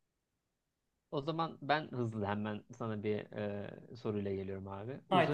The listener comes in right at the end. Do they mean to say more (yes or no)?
no